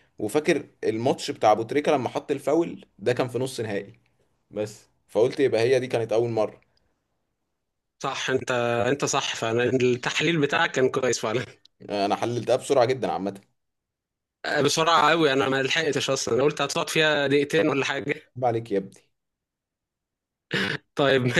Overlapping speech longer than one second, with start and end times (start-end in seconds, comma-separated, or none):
none